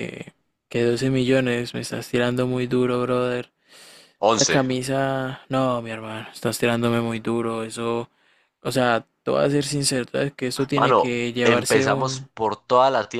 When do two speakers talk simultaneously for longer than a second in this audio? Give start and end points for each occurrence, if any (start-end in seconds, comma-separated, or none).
10.8-12.3